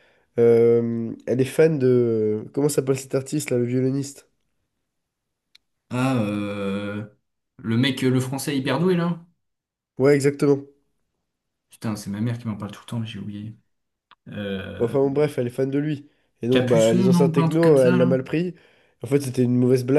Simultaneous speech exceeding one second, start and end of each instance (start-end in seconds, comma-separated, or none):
16.5-18.2